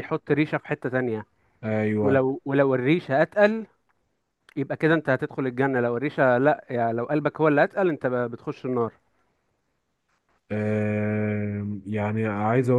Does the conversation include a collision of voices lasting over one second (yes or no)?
no